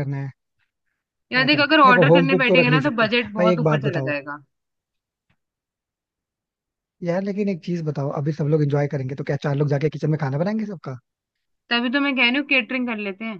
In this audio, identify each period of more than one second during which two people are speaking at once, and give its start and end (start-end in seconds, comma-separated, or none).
1.3-4.1